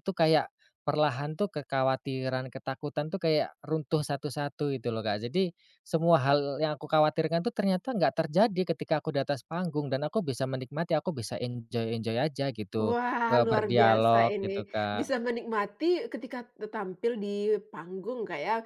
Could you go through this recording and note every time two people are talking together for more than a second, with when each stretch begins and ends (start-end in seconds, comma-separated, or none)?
12.8-15.1